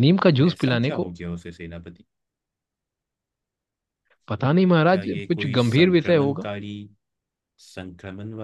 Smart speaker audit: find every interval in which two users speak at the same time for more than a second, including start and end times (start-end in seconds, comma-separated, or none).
4.9-6.5